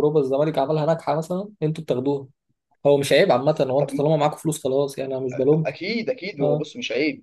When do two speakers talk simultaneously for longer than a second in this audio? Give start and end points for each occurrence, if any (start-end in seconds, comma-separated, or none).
none